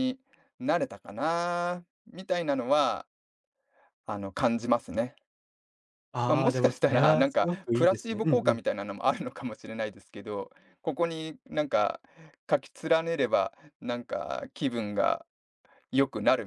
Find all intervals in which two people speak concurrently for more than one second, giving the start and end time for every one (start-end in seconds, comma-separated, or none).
6.3-8.6